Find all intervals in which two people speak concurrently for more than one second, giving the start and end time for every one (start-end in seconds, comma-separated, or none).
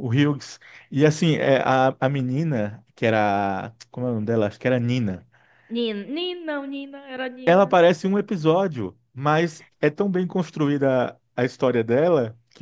none